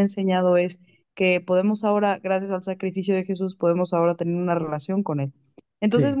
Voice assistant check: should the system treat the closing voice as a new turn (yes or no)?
no